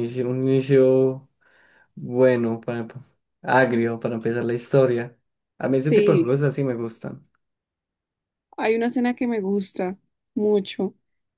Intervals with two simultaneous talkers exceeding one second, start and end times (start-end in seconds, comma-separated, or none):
none